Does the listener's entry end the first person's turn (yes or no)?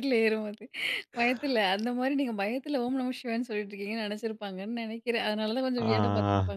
yes